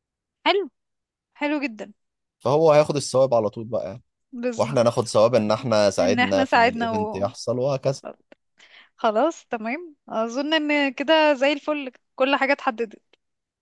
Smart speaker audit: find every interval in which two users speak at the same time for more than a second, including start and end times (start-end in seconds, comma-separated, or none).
6.0-7.2